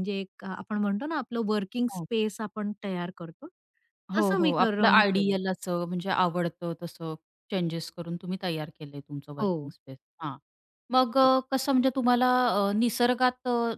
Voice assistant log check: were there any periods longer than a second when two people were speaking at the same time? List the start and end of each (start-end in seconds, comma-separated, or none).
4.2-5.4